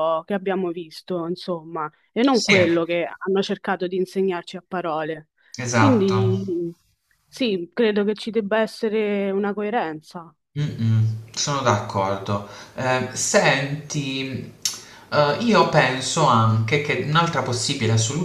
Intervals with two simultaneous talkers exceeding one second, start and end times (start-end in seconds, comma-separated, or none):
none